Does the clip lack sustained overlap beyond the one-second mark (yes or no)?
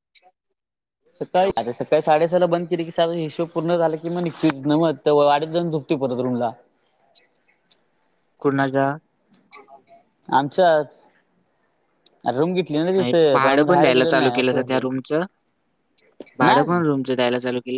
no